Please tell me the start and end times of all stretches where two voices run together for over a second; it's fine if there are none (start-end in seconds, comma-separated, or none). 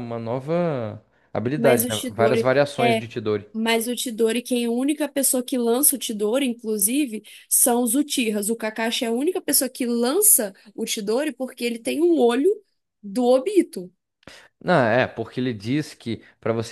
1.6-3.0